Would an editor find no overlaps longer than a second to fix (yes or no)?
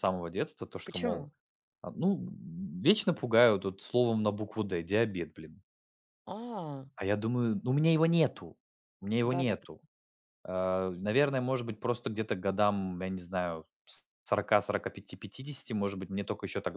yes